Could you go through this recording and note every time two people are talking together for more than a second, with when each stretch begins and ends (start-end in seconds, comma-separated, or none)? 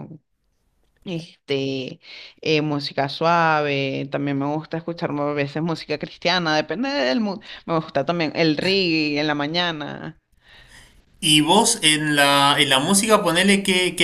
none